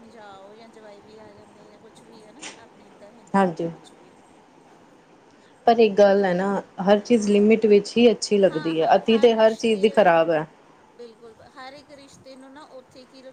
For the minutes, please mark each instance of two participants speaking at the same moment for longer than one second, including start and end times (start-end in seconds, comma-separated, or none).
8.5-10.1